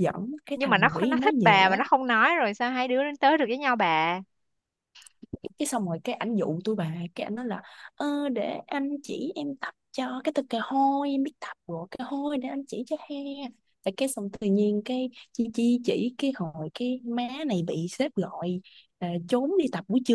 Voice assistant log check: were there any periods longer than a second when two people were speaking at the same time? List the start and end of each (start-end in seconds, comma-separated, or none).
0.5-1.8